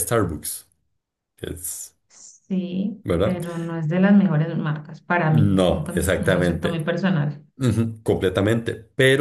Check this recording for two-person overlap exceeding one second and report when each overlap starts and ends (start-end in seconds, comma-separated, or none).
5.3-6.8